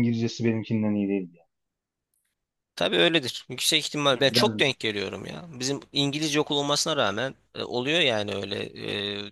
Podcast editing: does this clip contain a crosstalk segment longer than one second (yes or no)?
no